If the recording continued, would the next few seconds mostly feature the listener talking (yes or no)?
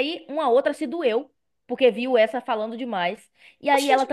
no